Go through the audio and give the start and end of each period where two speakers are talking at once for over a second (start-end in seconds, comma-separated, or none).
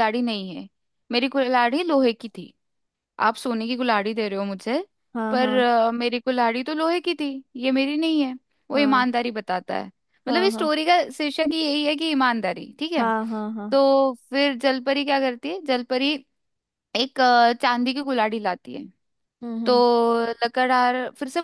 none